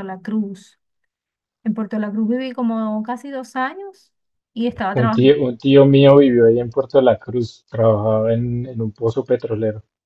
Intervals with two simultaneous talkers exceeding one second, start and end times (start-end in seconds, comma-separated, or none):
none